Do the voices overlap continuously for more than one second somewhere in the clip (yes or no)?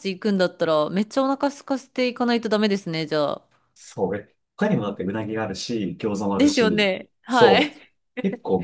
yes